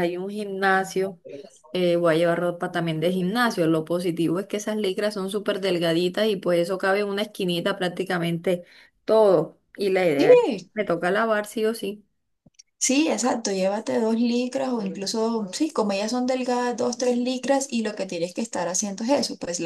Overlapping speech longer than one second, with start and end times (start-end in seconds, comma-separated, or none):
none